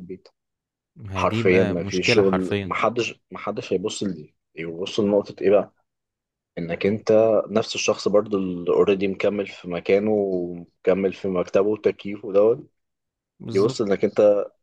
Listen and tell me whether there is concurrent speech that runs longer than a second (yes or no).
yes